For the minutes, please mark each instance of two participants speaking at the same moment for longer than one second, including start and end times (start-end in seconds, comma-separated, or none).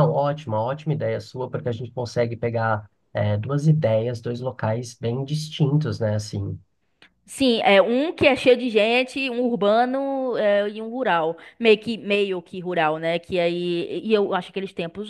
none